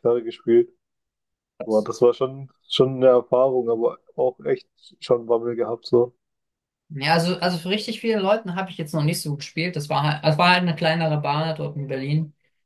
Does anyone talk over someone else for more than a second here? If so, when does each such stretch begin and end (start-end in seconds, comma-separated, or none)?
none